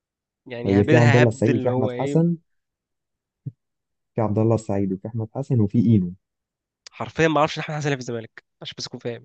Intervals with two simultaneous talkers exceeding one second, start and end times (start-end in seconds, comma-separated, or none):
0.7-2.2